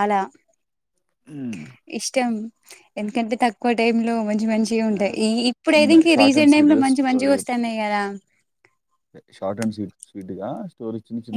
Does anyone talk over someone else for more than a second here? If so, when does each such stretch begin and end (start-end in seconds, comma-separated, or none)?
5.7-7.7